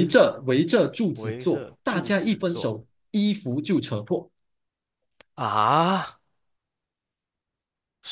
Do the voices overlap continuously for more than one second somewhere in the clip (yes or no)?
yes